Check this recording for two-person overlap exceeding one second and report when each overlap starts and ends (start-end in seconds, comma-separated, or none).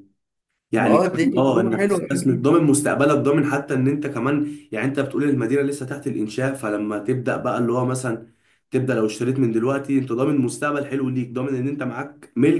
0.8-2.5